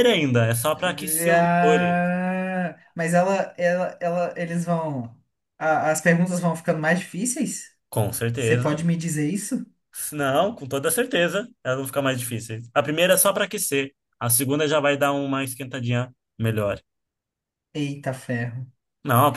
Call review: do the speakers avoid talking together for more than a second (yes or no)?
no